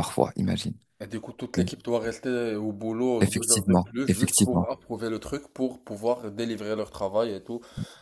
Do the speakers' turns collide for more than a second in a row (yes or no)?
yes